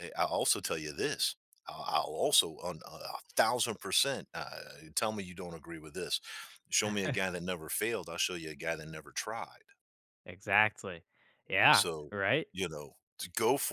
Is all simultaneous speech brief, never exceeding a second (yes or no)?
yes